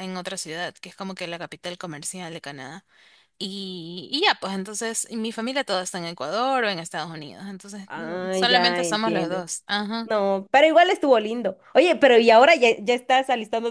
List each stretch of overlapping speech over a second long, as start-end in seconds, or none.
7.9-9.4